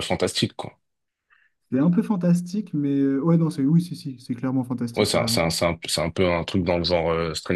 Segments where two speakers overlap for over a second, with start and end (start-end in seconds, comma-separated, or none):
none